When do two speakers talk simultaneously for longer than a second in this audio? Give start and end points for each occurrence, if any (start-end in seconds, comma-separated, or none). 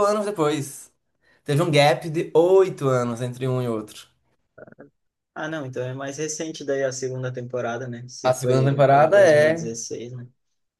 8.2-9.7